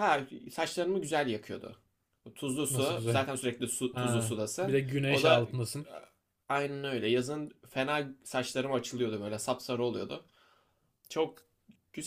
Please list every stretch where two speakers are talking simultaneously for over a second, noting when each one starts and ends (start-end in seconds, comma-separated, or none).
3.9-5.6